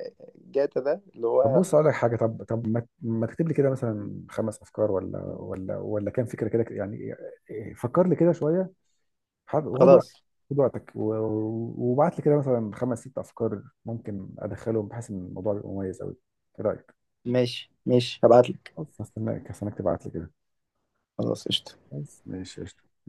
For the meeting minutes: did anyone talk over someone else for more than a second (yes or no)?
no